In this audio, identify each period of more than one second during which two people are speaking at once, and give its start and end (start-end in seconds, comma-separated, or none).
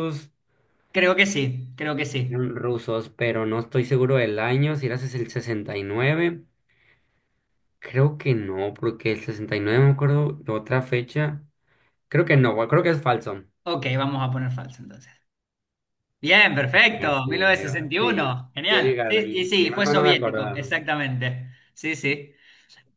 17.0-20.7